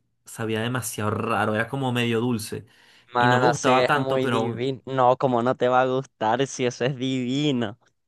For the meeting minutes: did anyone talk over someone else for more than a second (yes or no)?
yes